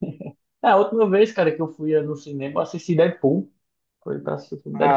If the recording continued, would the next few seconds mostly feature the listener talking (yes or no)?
yes